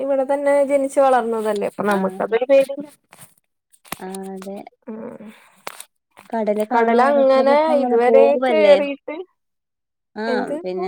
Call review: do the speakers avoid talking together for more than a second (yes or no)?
no